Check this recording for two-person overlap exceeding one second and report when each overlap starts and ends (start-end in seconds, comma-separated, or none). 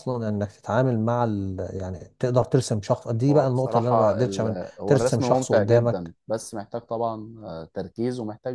3.3-6.2